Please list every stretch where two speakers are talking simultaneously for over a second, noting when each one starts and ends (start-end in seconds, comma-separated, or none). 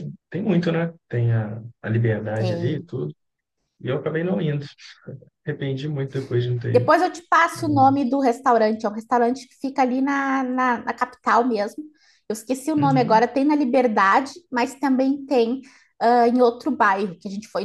none